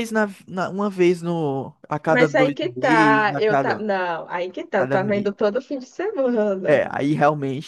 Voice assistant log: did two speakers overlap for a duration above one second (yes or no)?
yes